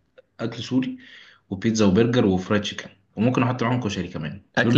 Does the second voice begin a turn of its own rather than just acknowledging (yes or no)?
yes